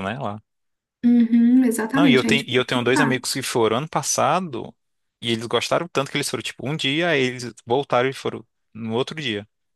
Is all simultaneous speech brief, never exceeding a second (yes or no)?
no